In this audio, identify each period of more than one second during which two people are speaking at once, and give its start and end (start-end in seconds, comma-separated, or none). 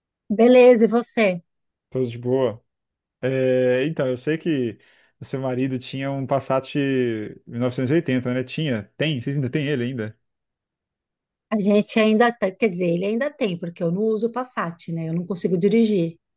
none